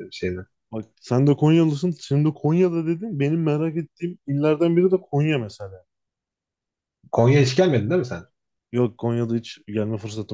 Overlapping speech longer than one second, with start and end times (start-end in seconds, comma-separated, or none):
none